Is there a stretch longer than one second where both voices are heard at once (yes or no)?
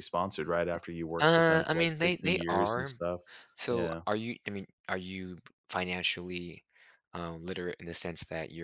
yes